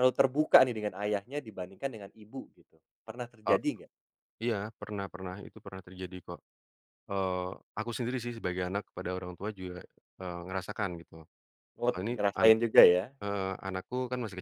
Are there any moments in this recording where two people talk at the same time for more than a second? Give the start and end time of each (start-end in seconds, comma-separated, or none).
none